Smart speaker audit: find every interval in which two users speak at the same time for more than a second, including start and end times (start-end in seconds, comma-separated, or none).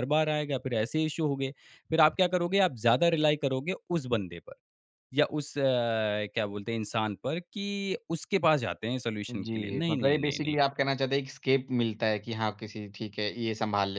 9.3-10.6